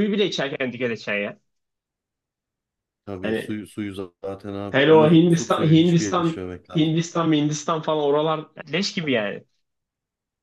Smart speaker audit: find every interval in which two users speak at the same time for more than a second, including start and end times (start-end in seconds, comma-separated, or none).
4.7-7.0